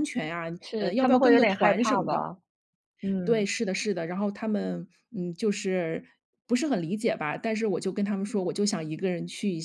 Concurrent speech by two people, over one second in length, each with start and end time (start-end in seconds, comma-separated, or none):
0.6-2.3